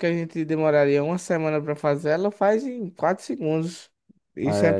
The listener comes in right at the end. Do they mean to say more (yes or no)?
no